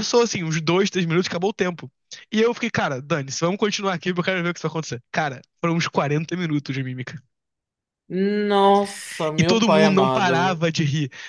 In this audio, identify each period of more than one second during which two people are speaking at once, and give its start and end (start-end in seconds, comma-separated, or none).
9.4-10.6